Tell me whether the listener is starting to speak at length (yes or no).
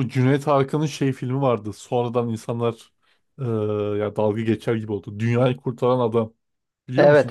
yes